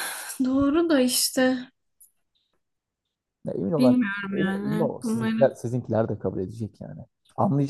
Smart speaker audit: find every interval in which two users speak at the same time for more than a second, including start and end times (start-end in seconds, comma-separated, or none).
3.8-5.4